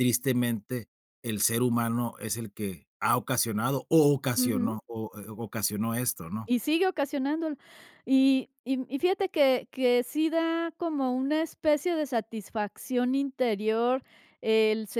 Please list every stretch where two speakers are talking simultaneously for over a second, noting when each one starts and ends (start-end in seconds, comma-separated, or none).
none